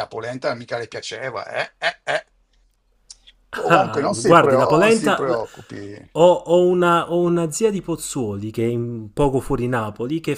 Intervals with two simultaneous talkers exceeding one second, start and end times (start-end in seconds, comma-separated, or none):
3.7-5.4